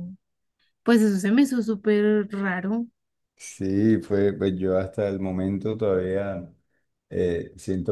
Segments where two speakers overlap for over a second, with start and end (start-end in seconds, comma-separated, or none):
none